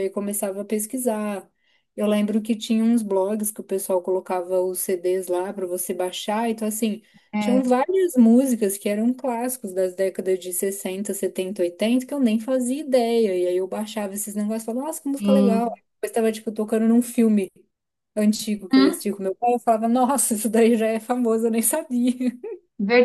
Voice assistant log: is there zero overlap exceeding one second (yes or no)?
yes